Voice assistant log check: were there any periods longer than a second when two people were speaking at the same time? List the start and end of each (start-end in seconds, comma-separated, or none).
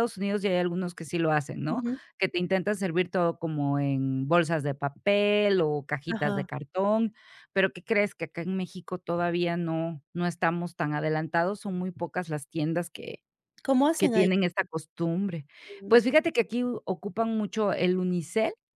none